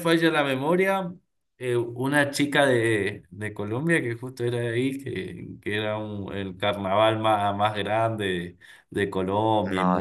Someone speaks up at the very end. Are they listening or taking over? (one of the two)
taking over